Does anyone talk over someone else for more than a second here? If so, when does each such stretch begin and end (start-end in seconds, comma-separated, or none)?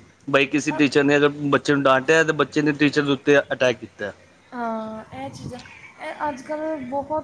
none